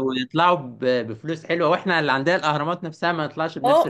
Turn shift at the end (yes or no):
yes